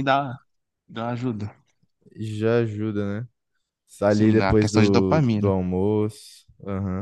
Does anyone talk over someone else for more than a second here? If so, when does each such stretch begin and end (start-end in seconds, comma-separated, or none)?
4.1-5.5